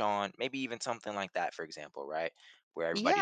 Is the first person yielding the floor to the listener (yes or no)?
yes